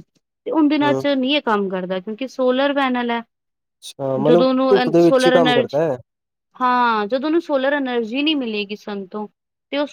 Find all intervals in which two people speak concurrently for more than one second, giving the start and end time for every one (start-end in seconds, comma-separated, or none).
4.2-5.8